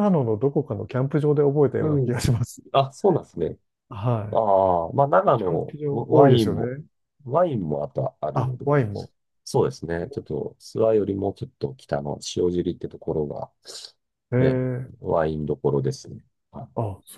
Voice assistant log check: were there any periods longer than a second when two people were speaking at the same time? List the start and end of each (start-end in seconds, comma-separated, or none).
5.4-6.7